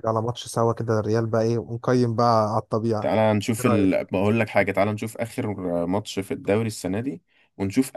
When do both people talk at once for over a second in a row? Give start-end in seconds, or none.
none